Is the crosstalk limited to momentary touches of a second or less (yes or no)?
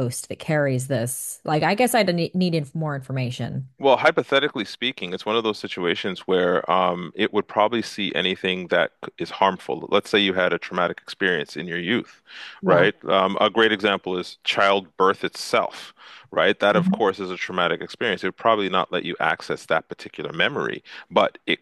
yes